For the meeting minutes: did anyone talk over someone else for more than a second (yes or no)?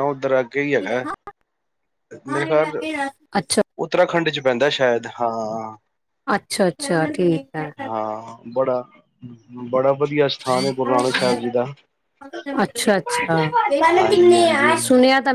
no